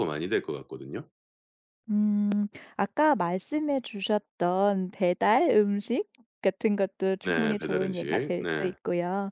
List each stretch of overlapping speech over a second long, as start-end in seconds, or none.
7.2-8.7